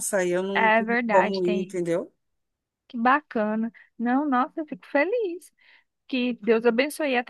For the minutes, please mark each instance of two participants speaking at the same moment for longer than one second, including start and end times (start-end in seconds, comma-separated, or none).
0.5-1.8